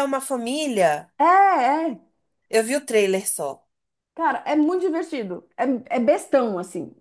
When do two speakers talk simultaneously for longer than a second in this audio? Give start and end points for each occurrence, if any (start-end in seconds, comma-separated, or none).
none